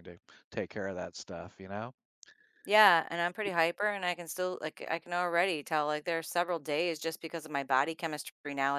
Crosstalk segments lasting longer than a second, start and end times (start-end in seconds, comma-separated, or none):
none